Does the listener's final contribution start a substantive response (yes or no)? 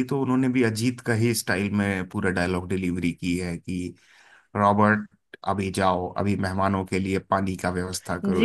yes